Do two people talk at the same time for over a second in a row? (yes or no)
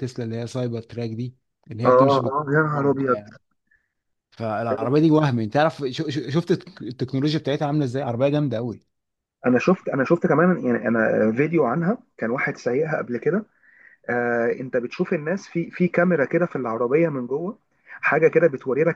yes